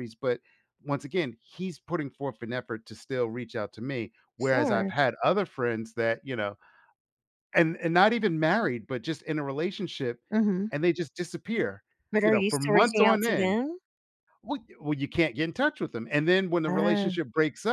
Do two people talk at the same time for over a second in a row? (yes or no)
yes